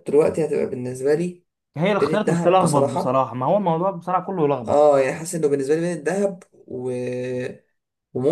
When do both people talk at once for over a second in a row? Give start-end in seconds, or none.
2.0-3.2